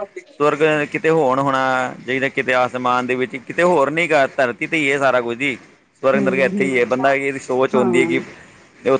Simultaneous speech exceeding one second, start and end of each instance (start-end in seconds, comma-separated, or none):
6.1-8.0